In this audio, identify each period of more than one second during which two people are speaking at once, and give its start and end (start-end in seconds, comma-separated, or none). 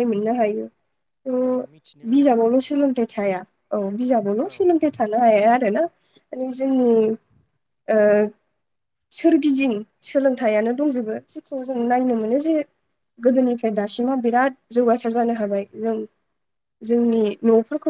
2.1-3.4